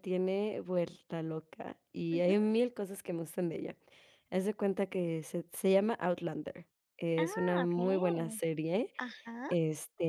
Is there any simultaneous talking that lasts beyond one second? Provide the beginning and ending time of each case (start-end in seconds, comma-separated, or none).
7.2-8.4